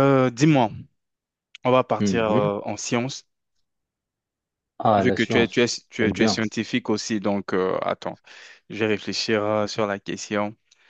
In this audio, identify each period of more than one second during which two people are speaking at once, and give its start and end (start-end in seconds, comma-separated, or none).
5.0-6.4